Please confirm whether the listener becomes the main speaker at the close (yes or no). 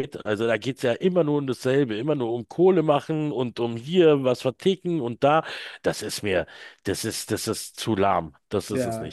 yes